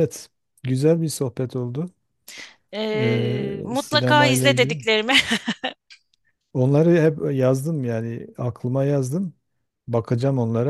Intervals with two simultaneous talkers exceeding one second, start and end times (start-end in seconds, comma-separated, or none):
2.9-4.8